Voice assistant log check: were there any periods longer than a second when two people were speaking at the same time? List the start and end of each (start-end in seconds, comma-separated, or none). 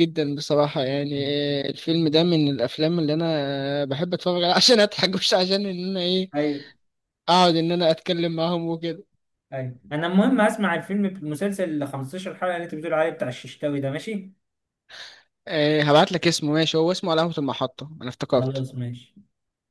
none